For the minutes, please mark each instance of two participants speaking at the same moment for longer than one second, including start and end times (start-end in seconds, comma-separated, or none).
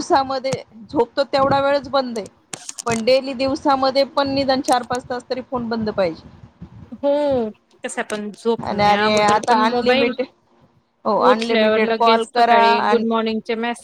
8.7-10.1, 11.3-13.0